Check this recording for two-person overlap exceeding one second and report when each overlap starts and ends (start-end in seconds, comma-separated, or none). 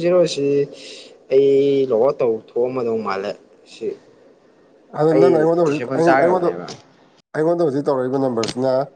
5.1-6.5